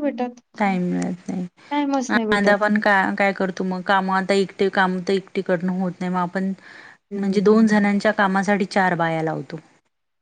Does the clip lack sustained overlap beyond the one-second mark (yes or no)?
yes